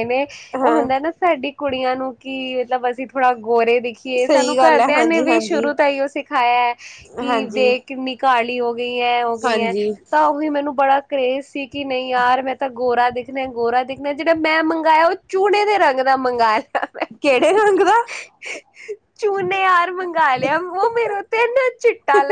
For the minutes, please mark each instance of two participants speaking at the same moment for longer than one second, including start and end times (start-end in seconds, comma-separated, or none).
4.2-5.7